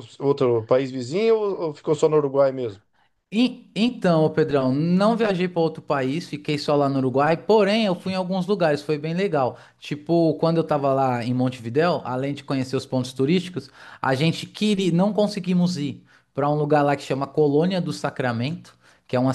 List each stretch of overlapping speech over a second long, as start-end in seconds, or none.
none